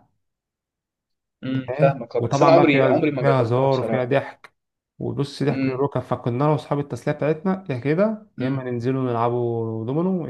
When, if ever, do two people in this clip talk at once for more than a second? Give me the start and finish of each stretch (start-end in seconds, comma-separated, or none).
1.5-4.1